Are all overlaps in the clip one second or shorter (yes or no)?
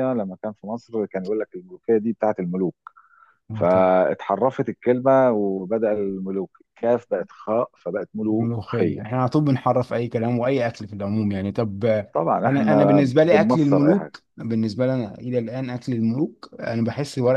no